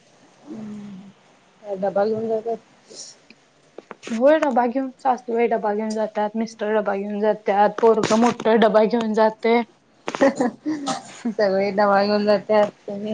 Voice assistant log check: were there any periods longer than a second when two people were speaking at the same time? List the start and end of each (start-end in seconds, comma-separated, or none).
none